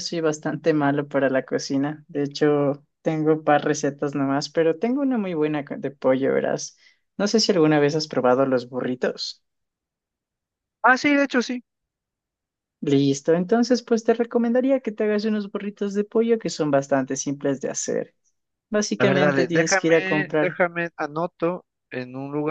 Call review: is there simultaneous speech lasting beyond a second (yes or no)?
yes